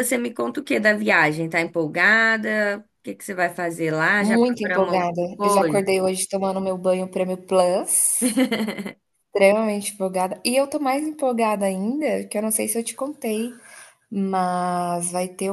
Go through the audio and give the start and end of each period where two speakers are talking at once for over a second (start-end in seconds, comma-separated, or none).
4.2-5.9